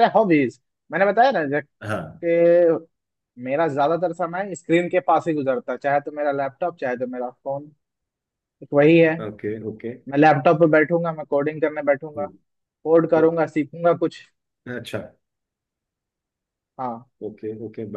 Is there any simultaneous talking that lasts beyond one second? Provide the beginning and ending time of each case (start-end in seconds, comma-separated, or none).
none